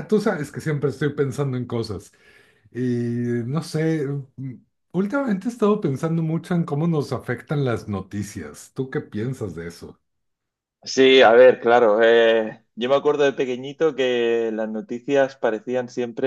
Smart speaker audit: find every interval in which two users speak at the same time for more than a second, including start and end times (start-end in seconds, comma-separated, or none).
none